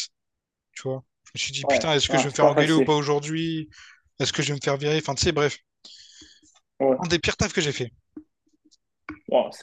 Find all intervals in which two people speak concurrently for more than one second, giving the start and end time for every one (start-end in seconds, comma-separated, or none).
1.6-3.0